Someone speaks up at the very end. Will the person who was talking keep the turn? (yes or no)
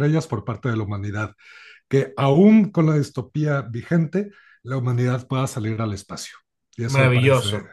no